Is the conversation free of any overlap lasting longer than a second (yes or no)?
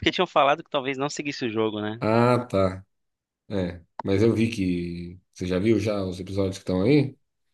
yes